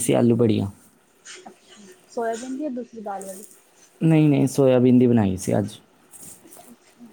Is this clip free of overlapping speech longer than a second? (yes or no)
yes